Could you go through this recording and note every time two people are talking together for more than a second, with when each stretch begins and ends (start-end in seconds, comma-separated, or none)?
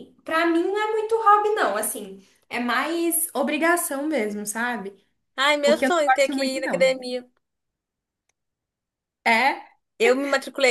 5.6-7.0